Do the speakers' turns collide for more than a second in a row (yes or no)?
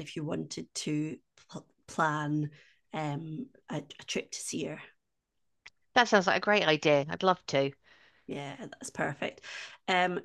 no